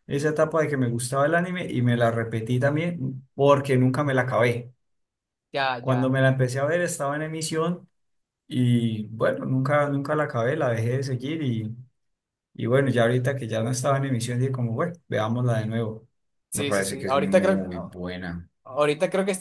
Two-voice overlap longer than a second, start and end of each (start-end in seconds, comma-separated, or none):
16.5-18.0